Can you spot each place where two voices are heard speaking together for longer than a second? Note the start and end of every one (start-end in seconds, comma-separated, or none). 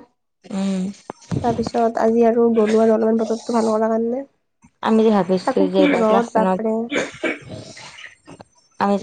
4.9-6.6